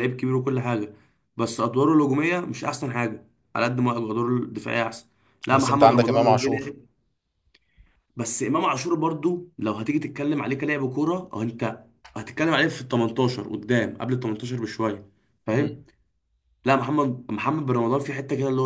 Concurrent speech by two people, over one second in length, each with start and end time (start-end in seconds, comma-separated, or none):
5.5-6.7